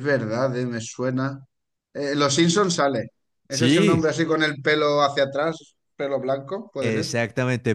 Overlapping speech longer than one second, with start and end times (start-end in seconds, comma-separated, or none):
none